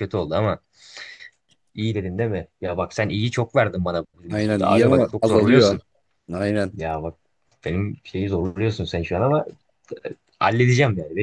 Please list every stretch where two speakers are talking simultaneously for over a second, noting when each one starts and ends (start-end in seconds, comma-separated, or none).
4.3-5.8